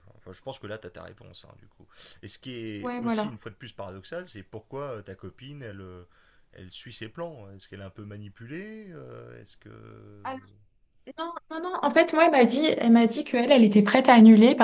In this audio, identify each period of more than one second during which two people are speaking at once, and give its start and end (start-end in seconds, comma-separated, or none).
none